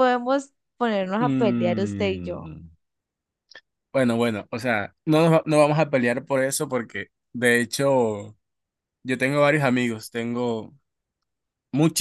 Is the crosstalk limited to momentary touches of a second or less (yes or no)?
no